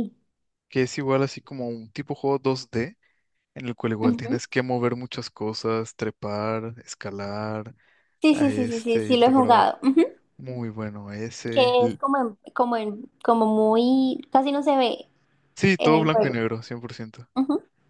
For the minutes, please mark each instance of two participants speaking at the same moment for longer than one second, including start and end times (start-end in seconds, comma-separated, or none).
8.3-9.7